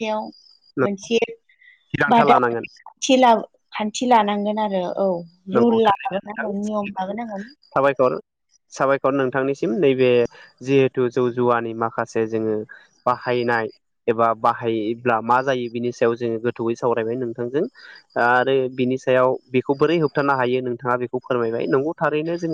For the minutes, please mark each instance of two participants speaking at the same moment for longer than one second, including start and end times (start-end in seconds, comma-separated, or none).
5.6-7.0